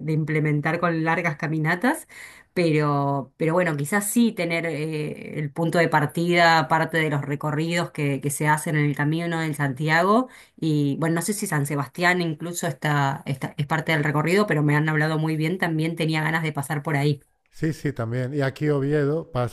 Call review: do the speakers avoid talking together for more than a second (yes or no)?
yes